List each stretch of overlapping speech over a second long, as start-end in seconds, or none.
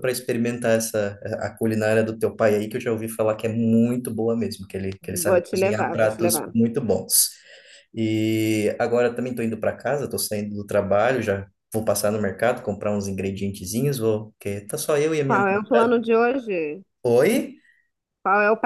5.2-6.5